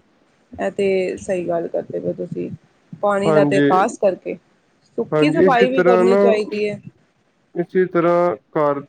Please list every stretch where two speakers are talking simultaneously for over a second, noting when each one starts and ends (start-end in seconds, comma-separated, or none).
5.1-6.4